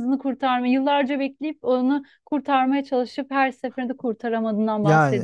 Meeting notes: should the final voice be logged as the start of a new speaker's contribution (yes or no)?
yes